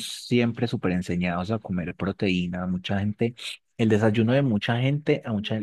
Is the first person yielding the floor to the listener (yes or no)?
no